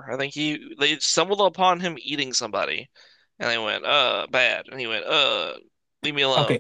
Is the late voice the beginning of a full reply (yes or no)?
yes